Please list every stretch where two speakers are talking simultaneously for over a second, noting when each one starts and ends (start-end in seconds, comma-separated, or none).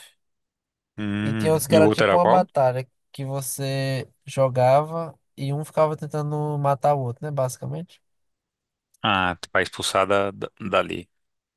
1.2-2.5